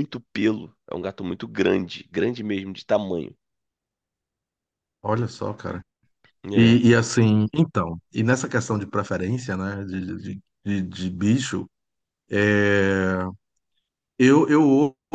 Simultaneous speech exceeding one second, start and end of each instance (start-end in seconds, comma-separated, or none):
none